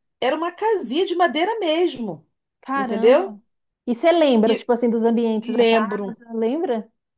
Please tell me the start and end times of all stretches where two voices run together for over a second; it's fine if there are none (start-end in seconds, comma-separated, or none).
none